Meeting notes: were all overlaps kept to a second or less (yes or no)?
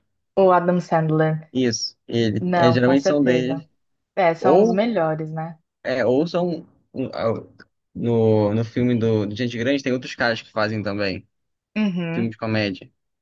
no